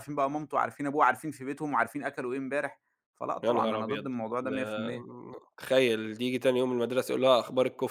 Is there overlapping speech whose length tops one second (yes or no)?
yes